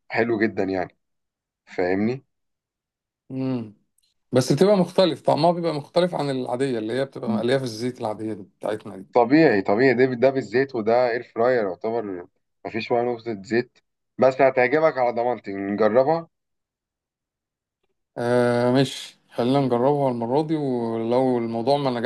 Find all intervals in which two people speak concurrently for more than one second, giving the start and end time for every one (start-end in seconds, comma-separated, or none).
none